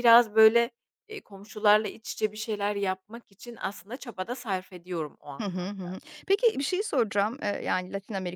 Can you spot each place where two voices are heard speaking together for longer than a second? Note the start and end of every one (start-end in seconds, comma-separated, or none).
none